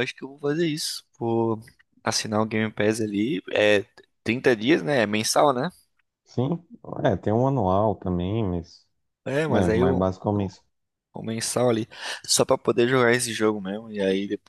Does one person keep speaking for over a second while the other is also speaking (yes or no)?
no